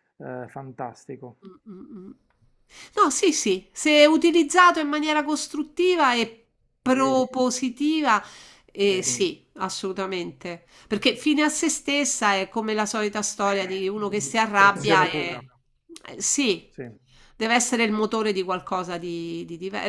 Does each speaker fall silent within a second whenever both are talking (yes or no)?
no